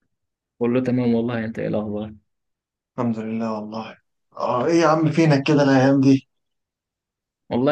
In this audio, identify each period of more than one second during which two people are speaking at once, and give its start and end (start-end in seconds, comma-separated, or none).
none